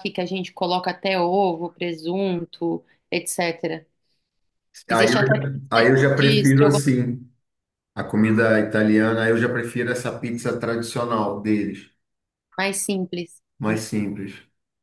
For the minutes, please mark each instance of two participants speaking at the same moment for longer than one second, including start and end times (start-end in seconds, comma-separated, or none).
4.9-6.9